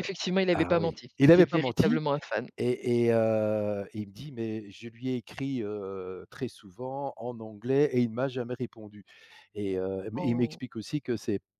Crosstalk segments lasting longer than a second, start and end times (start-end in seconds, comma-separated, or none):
0.5-2.0